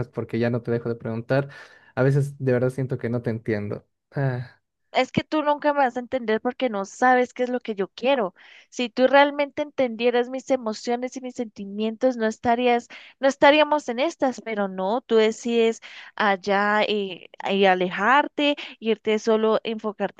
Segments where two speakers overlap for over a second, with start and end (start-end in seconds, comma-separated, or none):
none